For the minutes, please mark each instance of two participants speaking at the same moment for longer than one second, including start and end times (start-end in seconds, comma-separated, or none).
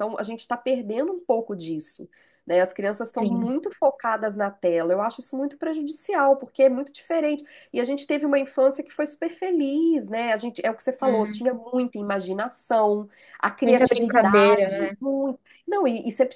13.6-15.0